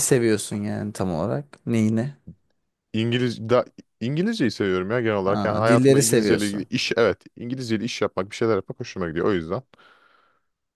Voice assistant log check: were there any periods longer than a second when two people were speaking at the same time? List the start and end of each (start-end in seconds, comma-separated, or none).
5.3-6.7